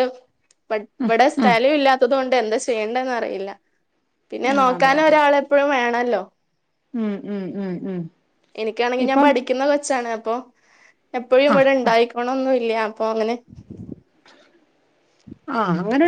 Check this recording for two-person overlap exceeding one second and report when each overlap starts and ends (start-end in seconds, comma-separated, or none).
none